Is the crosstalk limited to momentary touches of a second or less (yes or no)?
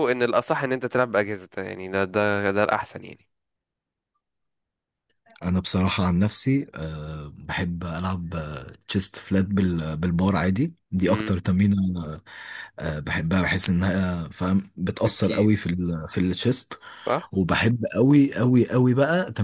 yes